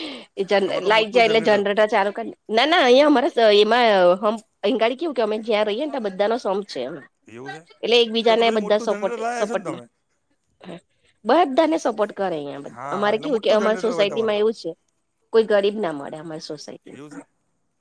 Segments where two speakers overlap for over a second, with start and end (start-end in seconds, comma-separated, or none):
8.2-9.8, 12.8-14.4